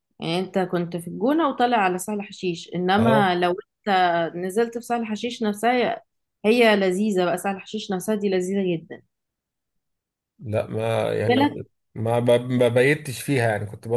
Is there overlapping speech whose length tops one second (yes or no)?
no